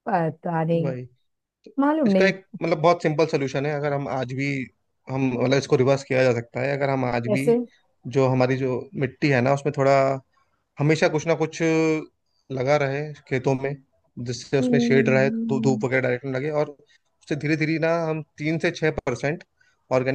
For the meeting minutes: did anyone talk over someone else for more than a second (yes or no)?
yes